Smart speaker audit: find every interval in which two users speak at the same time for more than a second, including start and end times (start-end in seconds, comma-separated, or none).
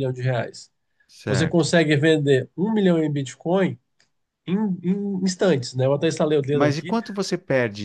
none